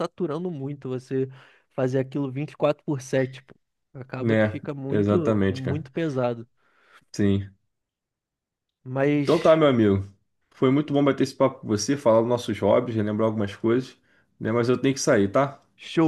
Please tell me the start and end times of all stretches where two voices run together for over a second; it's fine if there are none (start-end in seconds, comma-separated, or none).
4.2-5.9